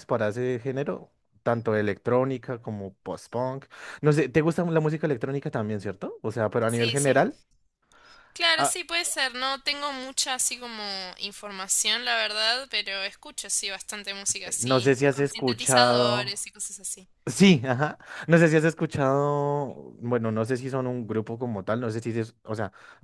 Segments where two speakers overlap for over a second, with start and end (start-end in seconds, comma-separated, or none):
14.4-16.4